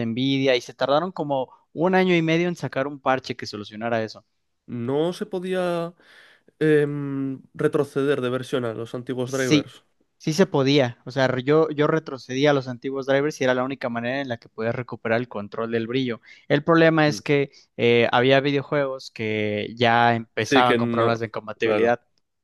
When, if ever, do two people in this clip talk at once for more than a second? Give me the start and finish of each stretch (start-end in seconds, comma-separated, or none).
20.4-21.9